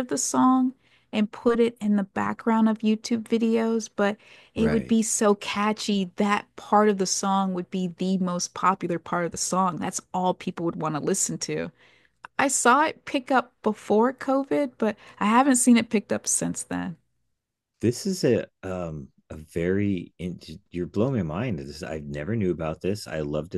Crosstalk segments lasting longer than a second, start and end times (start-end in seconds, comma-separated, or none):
none